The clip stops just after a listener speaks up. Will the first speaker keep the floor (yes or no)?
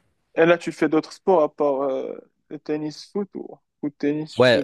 no